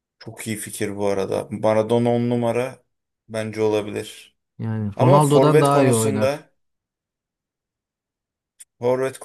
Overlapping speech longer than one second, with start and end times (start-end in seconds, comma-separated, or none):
5.0-6.5